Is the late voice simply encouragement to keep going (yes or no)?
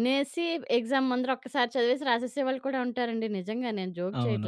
no